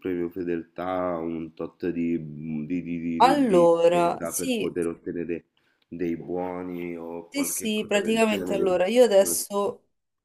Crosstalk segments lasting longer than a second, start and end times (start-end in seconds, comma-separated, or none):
3.2-4.7, 7.3-8.7